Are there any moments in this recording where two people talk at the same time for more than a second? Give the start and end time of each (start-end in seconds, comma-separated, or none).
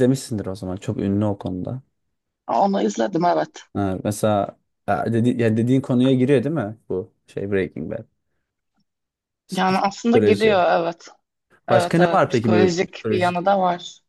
11.7-13.4